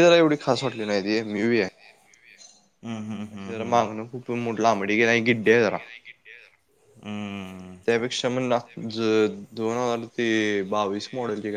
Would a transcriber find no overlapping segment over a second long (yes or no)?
yes